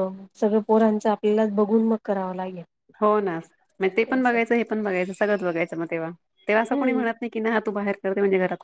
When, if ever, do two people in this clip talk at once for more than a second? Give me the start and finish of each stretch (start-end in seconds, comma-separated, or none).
none